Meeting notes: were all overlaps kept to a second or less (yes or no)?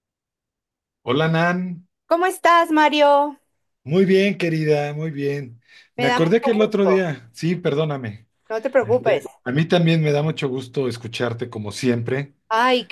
no